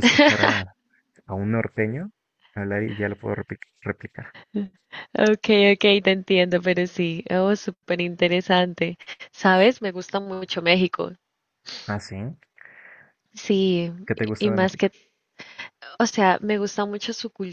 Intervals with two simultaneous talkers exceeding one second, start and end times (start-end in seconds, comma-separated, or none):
none